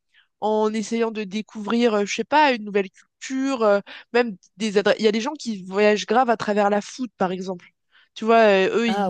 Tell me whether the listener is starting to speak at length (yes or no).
no